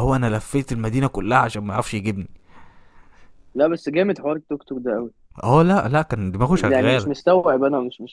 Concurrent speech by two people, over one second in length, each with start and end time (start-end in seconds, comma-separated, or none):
none